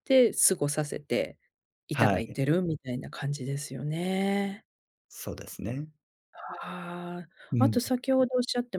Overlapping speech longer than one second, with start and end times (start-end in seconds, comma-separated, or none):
none